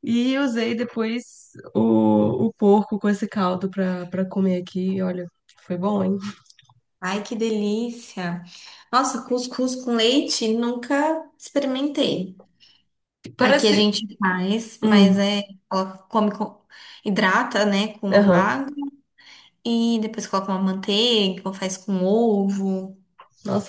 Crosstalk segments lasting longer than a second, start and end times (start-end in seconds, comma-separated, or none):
none